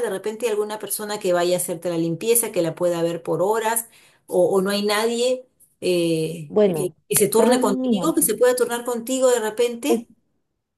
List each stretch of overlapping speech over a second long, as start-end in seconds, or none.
6.5-8.1